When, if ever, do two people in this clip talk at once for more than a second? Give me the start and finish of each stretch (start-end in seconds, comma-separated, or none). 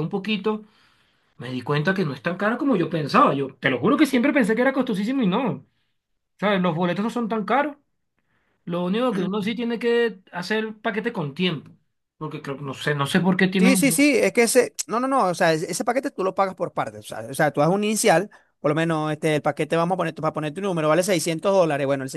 none